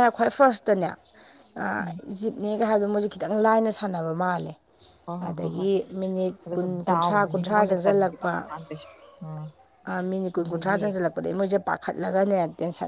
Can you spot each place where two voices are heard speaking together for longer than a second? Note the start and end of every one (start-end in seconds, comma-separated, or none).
6.5-8.3